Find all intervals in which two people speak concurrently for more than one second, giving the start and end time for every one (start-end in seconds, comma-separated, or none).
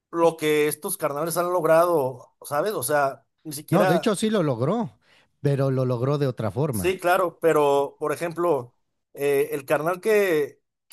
none